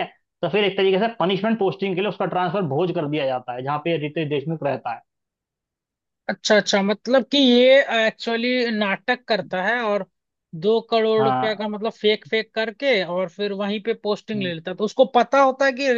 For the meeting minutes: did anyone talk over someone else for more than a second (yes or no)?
no